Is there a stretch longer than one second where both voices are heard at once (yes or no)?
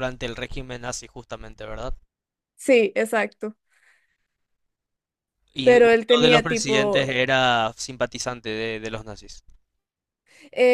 yes